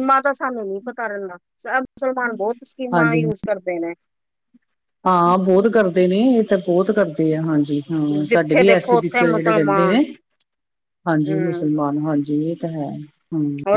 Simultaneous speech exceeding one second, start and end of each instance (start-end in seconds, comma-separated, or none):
8.3-10.0